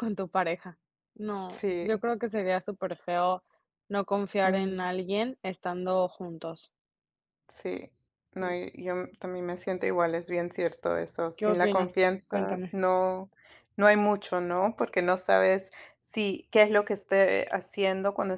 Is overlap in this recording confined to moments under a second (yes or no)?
no